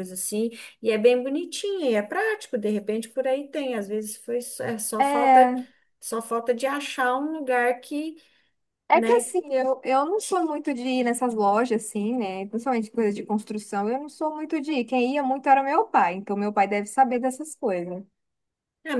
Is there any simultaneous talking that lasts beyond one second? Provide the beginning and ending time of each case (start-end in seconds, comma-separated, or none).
none